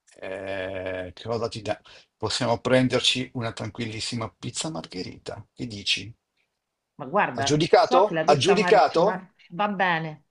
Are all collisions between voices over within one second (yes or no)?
no